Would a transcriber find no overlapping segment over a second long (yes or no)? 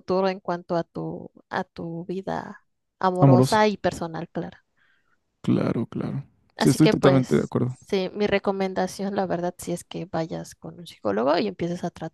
no